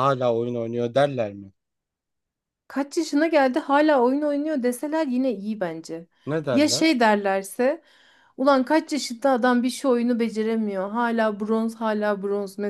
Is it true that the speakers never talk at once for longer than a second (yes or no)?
yes